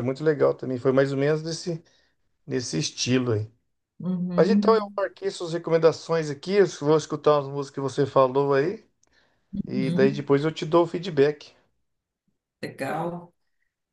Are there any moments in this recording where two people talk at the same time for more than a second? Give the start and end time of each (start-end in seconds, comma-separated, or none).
none